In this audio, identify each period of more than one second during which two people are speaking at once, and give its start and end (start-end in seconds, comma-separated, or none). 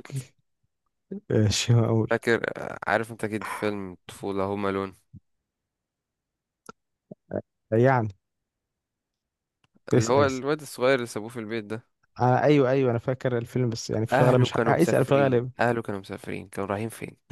14.1-15.5